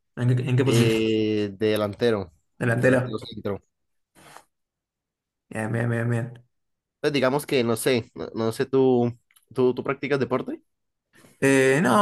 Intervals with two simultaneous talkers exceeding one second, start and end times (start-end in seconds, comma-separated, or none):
none